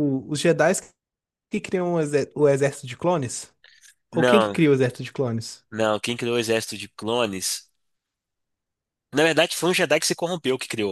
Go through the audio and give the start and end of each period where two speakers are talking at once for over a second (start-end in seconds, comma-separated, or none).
none